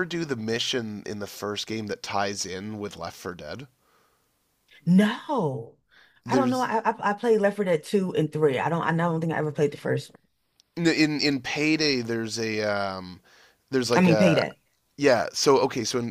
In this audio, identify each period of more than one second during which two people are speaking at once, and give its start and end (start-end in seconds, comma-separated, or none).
none